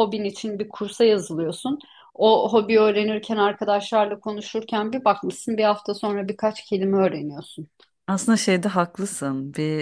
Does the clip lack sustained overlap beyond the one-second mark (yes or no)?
yes